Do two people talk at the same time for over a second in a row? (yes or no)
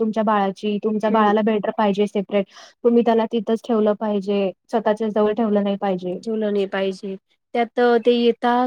no